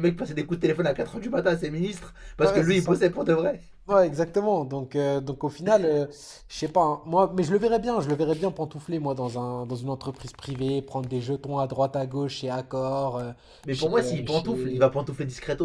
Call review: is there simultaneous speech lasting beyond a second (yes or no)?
yes